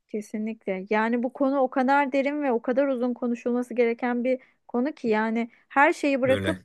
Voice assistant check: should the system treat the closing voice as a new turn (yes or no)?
no